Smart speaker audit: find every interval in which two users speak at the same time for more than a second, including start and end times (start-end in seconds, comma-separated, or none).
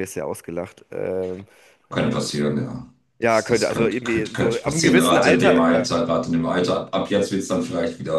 3.2-5.9